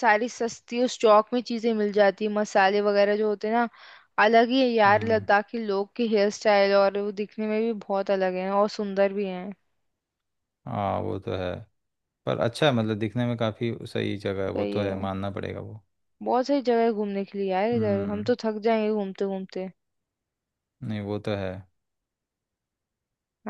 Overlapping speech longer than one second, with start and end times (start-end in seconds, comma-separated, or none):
none